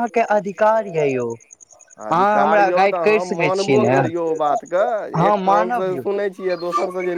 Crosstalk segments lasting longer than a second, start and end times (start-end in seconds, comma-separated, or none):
2.1-3.9